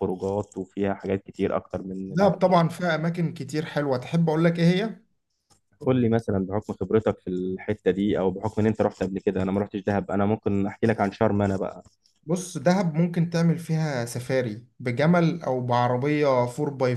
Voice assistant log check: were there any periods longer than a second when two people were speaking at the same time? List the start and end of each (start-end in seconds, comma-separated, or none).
none